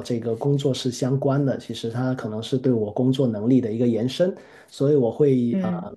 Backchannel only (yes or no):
yes